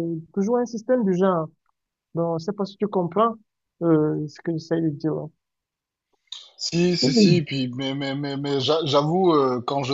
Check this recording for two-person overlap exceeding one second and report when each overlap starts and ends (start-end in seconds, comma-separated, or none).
none